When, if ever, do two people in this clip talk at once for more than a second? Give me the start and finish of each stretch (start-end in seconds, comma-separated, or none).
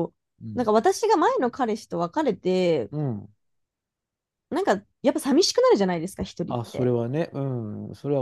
none